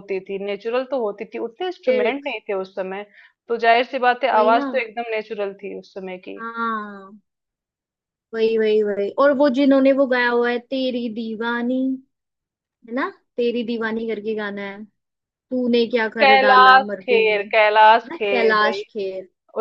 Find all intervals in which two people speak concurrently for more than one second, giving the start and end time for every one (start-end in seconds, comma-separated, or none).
16.2-18.8